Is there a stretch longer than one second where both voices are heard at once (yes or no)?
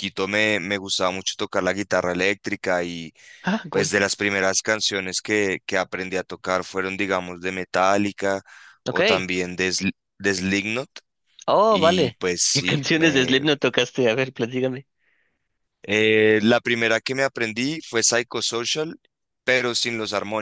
yes